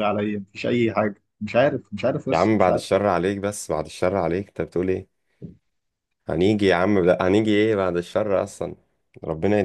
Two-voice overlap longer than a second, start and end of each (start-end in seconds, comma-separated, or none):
none